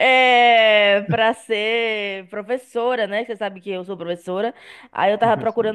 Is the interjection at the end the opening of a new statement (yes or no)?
no